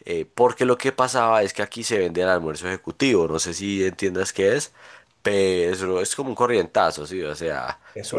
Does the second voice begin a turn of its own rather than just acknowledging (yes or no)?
yes